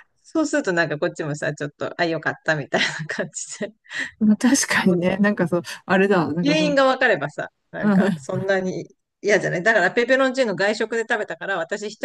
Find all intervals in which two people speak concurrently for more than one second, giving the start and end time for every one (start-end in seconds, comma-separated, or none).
none